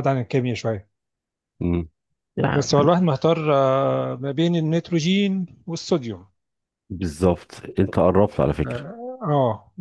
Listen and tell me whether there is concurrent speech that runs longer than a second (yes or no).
no